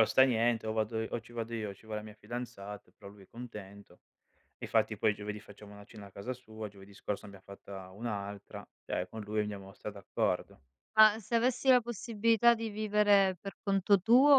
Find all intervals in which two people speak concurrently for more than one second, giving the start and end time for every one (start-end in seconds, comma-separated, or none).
none